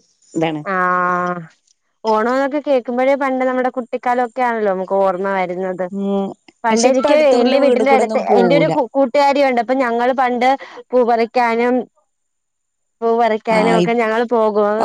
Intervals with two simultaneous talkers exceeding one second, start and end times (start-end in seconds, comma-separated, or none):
6.7-8.7